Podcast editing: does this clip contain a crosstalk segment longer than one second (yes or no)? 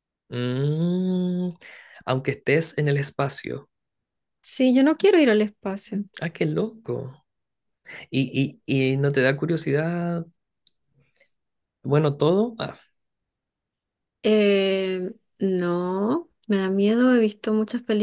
no